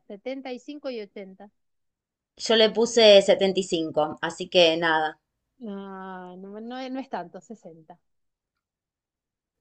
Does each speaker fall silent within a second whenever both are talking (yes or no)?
yes